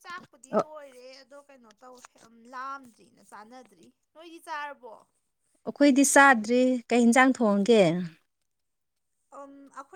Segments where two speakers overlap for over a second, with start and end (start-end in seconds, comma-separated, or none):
none